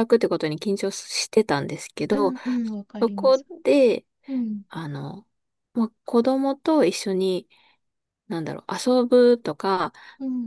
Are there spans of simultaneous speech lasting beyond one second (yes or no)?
no